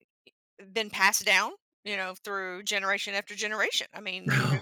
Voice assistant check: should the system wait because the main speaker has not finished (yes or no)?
yes